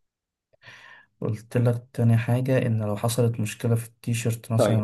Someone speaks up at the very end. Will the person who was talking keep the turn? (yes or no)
no